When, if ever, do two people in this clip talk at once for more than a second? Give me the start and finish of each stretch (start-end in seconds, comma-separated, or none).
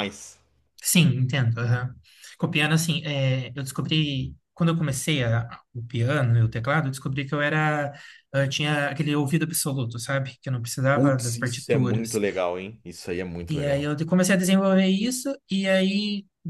10.9-12.2